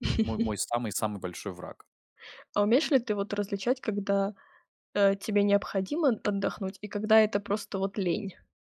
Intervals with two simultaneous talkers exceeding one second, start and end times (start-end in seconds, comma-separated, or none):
none